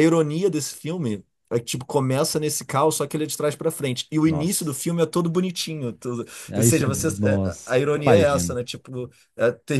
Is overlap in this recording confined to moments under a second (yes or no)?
no